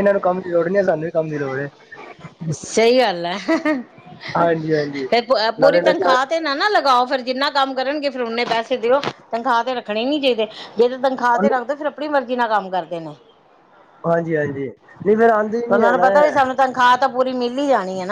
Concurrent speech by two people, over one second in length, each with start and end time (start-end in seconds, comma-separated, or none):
none